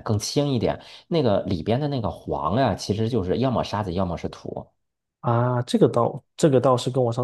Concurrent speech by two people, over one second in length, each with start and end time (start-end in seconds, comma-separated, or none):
none